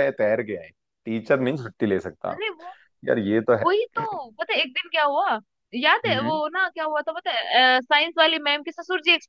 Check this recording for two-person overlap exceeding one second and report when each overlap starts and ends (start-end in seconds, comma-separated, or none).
none